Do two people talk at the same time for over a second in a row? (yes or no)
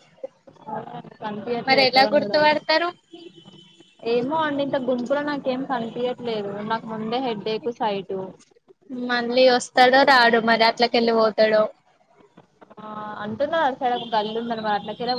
no